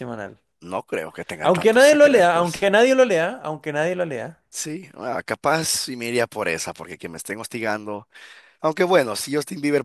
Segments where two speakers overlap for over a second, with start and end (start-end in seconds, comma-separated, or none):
1.4-2.7